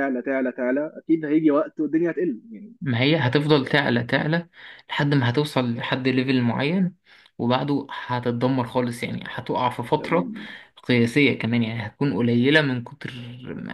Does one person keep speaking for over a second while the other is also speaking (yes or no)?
no